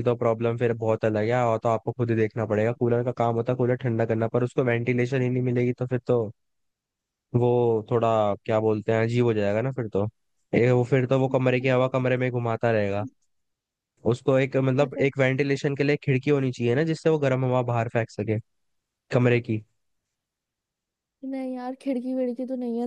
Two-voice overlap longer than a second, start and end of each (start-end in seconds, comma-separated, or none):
none